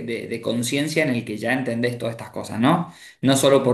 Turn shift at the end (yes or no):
no